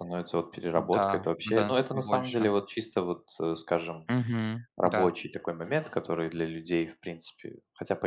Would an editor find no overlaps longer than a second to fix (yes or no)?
no